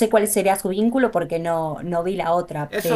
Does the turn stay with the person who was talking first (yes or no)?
no